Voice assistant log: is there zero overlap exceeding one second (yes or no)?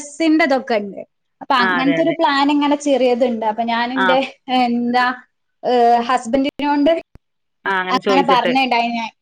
yes